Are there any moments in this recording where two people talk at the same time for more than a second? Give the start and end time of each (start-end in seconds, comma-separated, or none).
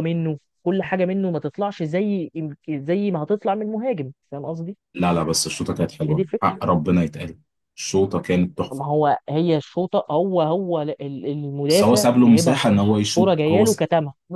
11.7-13.8